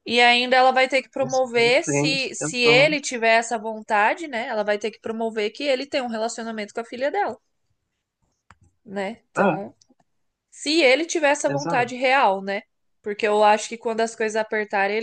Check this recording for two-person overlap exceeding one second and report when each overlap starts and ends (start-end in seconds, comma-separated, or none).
1.2-3.0